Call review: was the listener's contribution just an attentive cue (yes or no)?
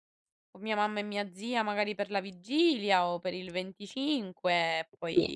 yes